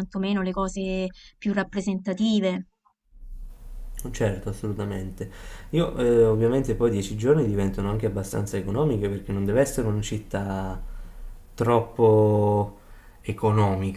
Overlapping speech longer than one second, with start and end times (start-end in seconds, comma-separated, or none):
none